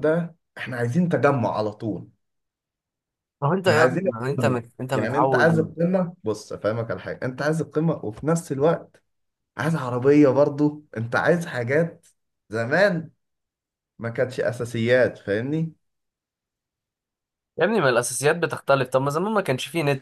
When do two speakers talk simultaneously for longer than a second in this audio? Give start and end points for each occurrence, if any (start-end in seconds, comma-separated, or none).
3.6-5.7